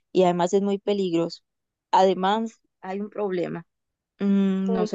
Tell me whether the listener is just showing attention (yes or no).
yes